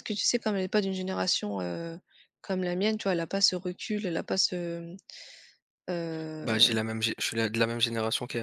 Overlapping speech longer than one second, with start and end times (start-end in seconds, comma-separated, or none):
none